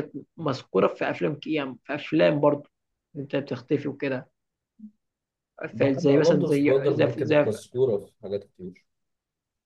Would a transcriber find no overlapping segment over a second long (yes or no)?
no